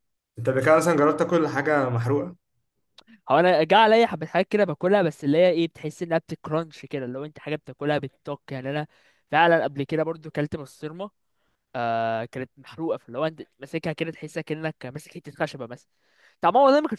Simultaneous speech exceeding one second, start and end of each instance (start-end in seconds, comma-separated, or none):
none